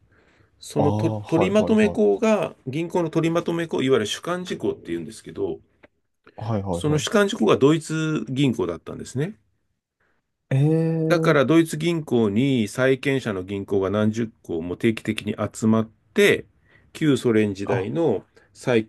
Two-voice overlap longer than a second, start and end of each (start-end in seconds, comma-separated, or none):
0.8-2.1